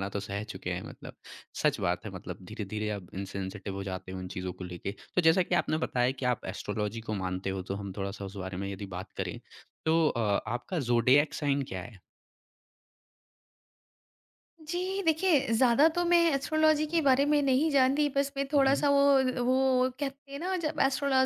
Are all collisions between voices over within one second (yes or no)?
yes